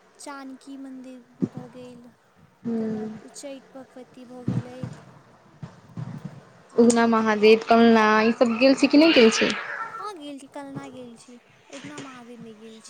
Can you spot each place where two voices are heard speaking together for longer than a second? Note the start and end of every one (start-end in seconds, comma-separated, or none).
8.2-9.5